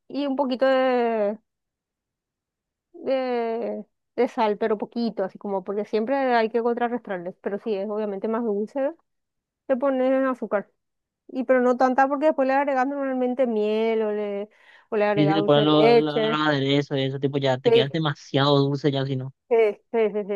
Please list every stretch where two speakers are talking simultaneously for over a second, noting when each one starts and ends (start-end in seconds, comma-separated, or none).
15.1-16.5